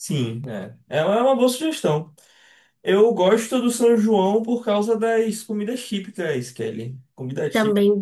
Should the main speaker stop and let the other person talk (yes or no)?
yes